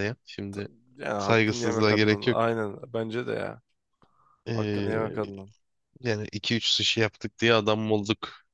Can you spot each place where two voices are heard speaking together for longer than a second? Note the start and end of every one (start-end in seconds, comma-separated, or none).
1.2-2.4